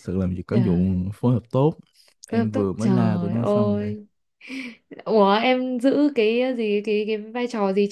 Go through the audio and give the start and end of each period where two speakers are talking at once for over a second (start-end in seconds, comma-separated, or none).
2.3-3.9